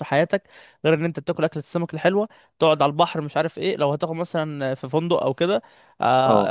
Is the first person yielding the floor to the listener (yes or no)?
no